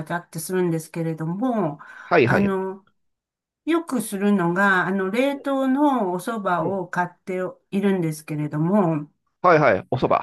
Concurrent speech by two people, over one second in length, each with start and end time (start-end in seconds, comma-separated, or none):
none